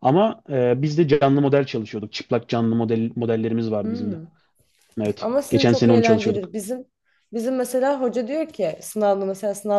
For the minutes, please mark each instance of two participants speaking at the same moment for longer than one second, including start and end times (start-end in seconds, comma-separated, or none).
5.2-6.5